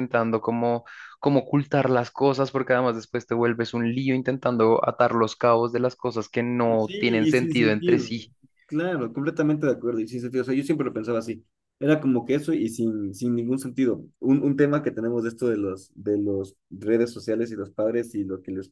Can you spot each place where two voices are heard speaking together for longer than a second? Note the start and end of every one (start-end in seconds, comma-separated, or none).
6.8-8.1